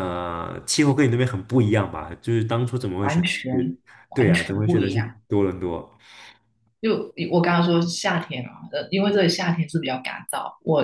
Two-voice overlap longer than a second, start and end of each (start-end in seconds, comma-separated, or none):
3.0-5.2